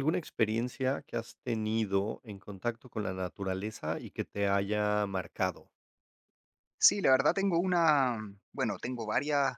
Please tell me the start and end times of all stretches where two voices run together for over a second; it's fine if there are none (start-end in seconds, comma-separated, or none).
none